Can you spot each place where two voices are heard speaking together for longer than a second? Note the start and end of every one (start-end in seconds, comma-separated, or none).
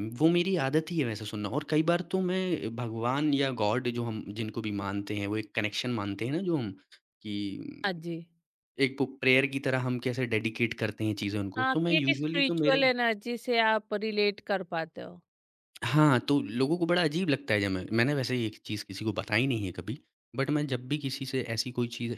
11.6-12.8